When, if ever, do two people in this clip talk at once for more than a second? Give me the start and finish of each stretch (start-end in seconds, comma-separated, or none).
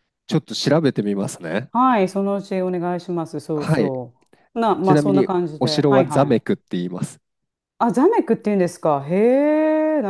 4.8-6.4